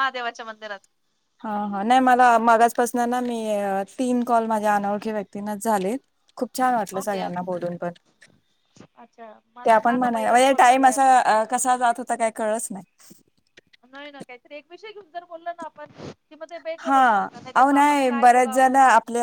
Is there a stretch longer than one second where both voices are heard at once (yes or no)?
no